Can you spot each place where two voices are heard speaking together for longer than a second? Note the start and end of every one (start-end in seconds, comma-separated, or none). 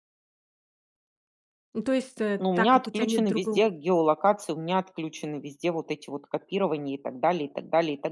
2.4-3.7